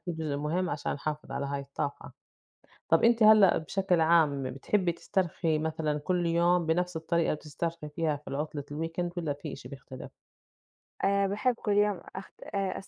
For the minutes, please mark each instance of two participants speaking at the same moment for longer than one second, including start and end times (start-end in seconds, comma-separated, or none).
none